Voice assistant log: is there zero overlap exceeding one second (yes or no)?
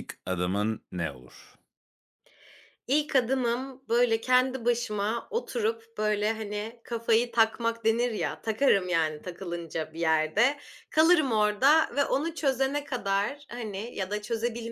yes